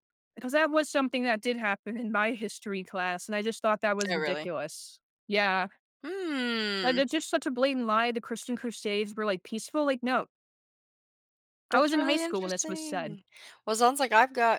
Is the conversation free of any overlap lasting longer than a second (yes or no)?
no